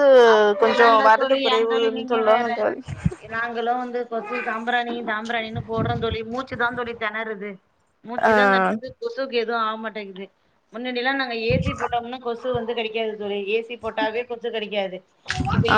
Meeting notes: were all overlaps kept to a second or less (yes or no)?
no